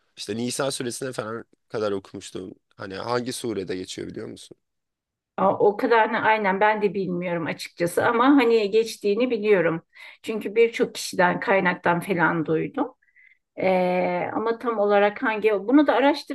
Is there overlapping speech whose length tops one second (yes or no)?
no